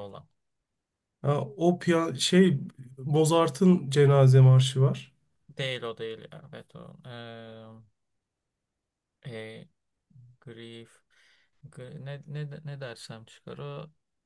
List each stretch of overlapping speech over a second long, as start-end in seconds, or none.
none